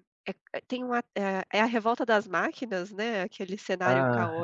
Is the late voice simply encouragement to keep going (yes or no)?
yes